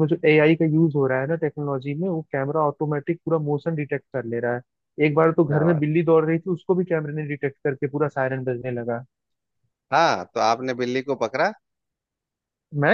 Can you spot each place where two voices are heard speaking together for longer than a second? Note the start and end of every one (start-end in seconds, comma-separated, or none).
none